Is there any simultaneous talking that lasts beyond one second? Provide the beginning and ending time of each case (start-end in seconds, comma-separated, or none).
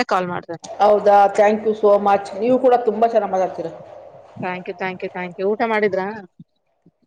none